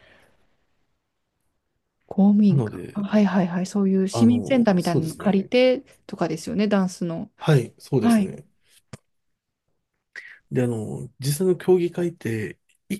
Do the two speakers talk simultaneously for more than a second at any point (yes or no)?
yes